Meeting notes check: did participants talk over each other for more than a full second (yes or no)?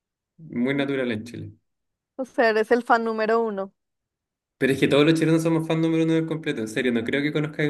no